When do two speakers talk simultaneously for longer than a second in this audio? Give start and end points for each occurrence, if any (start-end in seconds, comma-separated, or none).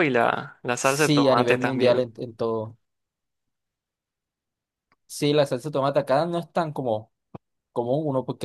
0.8-2.0